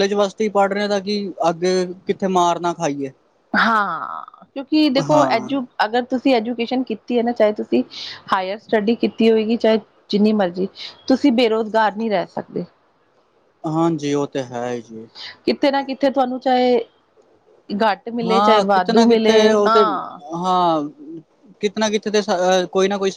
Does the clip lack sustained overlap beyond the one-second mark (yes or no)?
no